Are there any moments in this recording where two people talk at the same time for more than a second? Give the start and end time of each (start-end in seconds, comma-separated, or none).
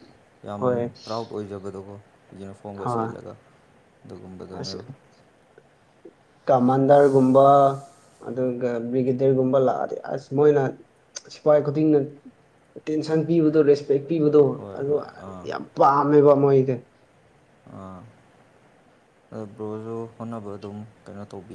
none